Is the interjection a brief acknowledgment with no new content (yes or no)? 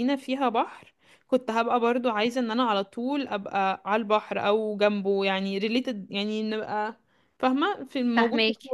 no